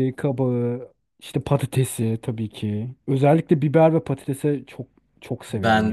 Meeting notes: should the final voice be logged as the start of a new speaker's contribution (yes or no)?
yes